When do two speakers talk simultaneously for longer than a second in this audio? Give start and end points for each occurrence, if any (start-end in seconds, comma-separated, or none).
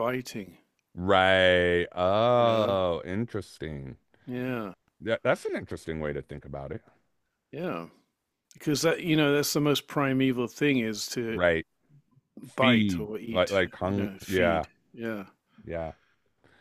12.6-14.7